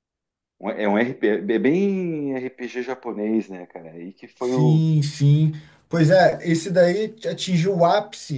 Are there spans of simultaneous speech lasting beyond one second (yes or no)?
no